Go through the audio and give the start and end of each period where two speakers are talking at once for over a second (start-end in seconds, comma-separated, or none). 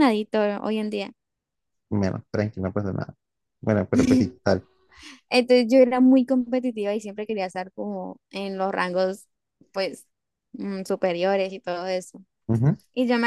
none